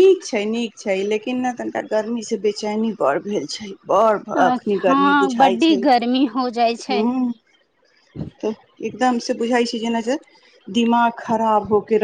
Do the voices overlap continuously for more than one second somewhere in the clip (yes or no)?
yes